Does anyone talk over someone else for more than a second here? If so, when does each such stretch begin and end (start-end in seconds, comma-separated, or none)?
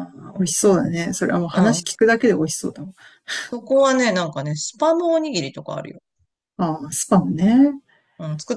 none